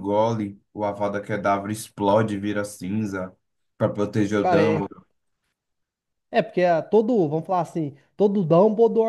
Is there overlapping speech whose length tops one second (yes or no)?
no